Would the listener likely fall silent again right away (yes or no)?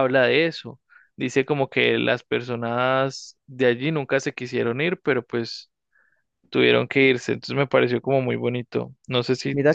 no